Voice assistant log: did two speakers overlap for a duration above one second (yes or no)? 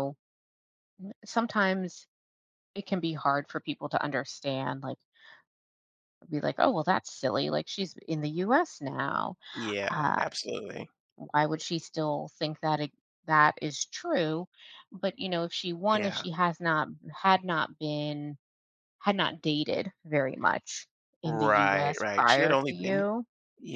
yes